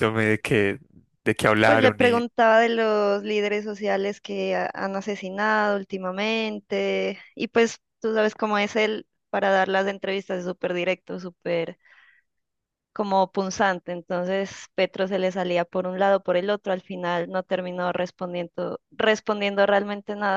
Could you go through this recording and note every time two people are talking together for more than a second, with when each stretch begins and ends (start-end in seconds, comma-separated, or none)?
none